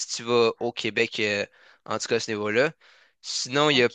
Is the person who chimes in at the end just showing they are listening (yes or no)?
no